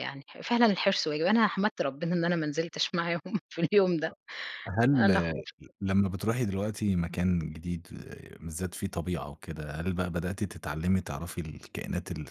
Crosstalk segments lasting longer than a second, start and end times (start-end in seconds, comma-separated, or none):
none